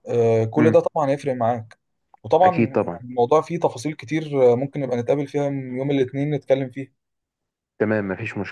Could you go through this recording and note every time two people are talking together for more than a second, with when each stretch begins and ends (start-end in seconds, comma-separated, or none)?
none